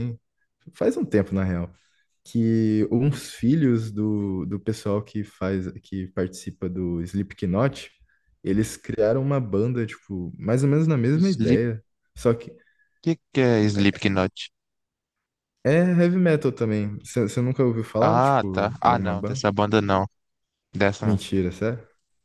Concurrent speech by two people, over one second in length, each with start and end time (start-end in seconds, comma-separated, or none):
18.0-19.4